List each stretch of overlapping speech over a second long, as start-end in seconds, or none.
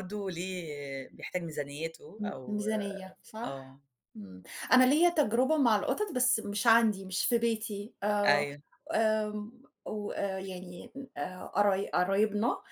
none